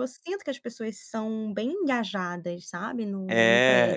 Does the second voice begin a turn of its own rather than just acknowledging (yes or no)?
yes